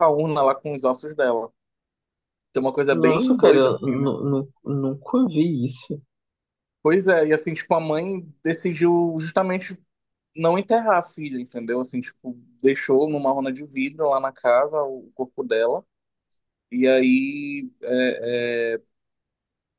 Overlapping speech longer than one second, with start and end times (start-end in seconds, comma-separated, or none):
2.9-4.1